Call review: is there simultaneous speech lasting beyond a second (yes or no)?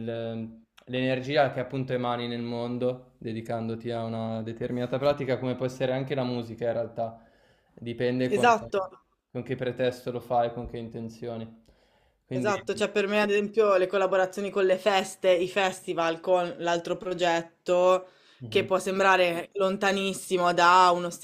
no